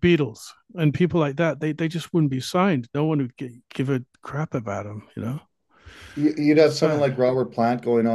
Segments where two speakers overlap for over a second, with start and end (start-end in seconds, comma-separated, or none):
none